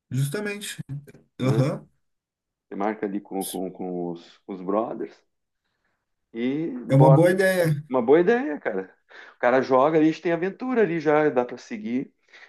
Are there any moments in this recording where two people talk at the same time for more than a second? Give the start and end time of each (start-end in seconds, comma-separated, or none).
none